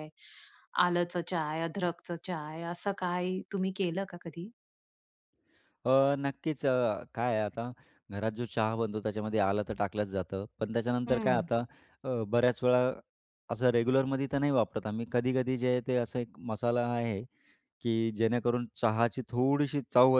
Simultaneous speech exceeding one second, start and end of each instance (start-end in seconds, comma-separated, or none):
none